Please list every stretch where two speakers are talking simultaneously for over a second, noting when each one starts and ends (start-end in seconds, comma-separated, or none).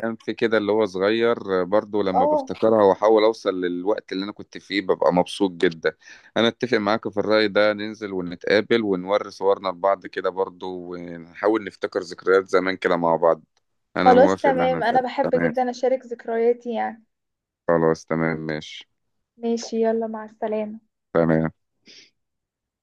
14.0-15.5